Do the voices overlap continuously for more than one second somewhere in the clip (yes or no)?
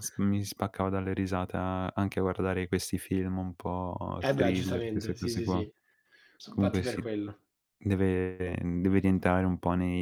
yes